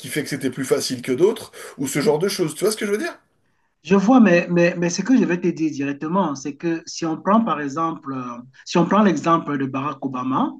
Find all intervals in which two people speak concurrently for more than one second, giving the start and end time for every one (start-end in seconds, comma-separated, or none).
none